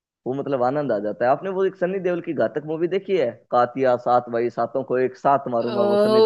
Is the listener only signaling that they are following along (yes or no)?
no